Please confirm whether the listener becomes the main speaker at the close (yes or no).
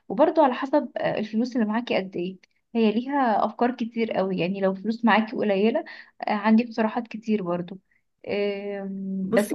no